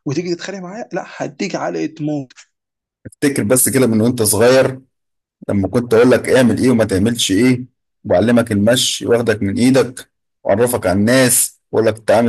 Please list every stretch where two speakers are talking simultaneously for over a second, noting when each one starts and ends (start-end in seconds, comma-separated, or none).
none